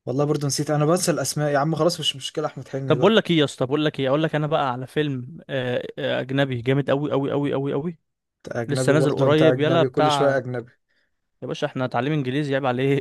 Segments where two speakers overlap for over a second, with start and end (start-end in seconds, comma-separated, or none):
8.7-10.4